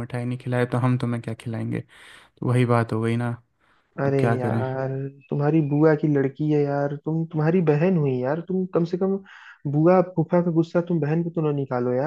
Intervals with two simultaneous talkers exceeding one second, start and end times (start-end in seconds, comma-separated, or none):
none